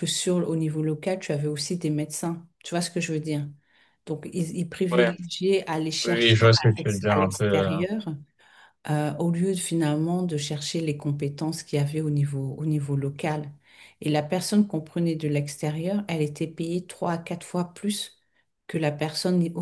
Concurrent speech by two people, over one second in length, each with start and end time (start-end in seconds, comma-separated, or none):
6.0-7.7